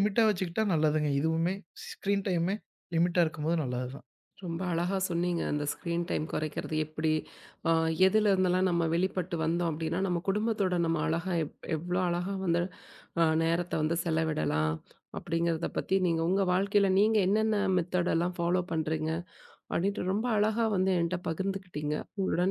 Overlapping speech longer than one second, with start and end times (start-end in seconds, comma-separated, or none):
none